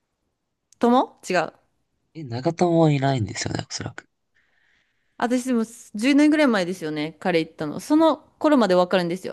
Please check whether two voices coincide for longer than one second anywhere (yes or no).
no